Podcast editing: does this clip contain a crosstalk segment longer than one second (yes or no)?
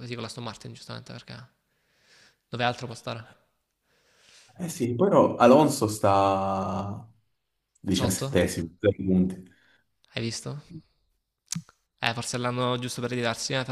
no